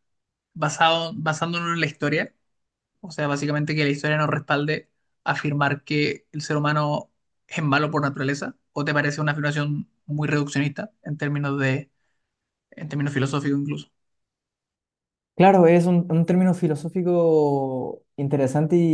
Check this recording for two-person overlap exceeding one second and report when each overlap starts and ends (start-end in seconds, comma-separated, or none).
none